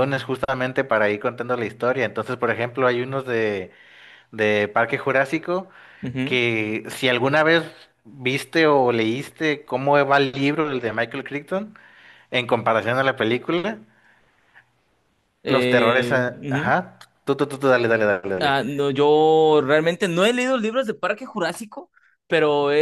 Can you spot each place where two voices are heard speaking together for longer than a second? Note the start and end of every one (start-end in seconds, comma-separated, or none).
15.5-16.8